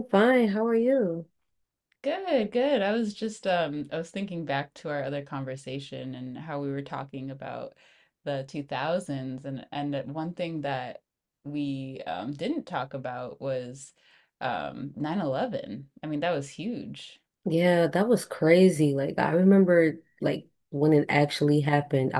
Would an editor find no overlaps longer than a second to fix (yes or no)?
yes